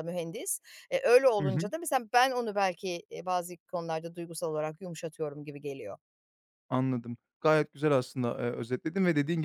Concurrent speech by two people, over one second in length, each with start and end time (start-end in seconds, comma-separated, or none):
none